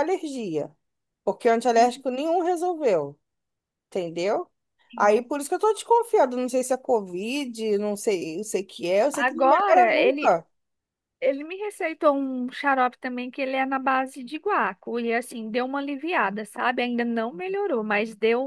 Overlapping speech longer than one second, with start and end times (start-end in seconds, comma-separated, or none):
9.1-10.4